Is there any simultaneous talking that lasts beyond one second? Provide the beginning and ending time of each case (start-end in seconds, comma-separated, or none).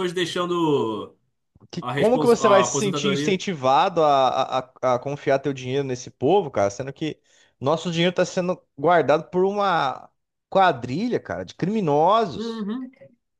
1.8-3.4